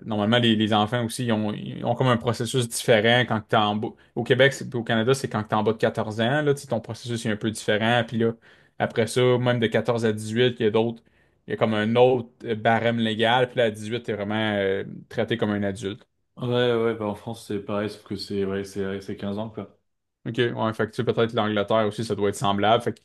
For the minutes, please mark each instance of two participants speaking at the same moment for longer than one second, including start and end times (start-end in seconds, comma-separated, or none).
none